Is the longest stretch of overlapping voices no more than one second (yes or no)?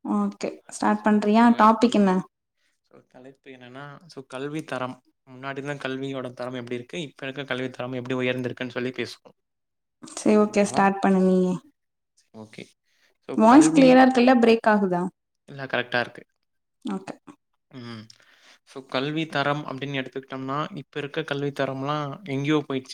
yes